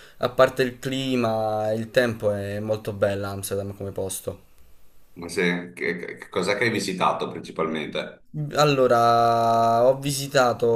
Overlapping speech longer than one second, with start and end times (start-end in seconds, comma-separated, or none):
none